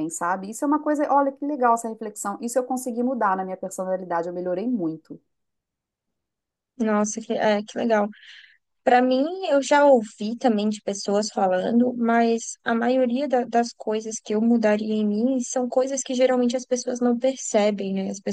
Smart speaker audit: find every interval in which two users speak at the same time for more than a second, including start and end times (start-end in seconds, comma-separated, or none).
none